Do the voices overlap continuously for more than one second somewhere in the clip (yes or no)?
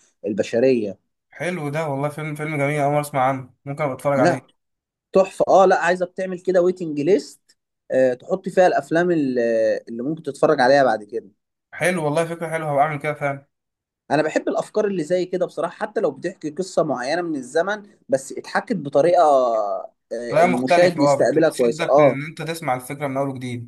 yes